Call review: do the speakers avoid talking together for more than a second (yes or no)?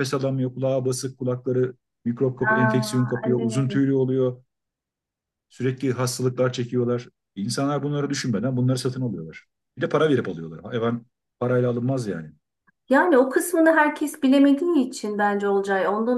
no